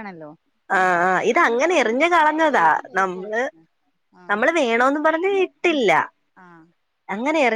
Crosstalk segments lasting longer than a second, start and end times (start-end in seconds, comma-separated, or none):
0.8-3.4